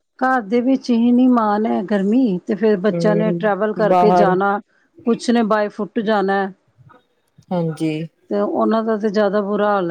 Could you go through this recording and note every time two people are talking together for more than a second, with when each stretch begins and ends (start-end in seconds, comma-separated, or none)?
2.9-4.3